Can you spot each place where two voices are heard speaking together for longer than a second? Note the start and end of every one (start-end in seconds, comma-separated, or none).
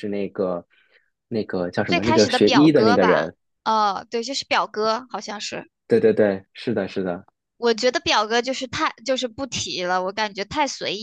1.8-3.3